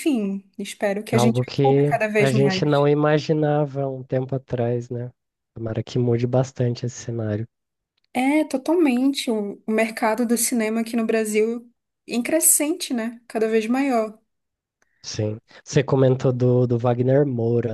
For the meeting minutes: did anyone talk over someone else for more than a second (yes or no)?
yes